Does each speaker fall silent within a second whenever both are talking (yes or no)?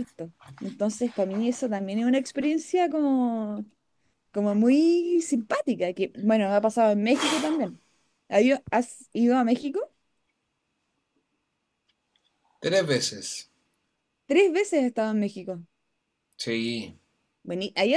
yes